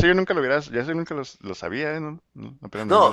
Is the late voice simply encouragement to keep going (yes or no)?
no